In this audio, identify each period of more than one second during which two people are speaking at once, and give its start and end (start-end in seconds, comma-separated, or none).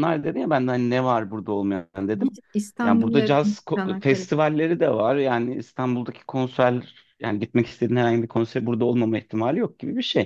2.8-4.3